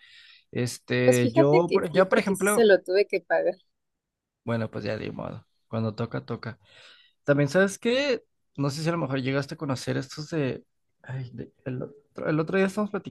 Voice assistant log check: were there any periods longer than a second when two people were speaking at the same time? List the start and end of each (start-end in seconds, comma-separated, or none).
1.0-2.7